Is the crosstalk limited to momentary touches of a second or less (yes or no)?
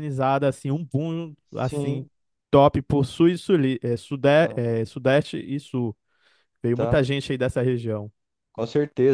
yes